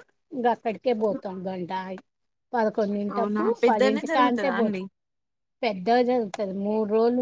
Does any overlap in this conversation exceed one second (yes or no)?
yes